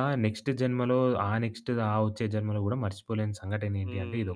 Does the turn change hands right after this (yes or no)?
yes